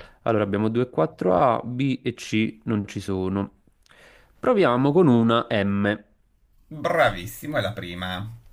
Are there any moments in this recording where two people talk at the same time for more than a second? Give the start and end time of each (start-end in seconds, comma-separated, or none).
none